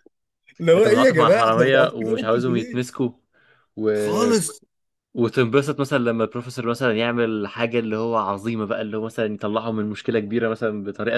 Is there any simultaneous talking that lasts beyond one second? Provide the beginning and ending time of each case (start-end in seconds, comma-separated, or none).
0.8-2.9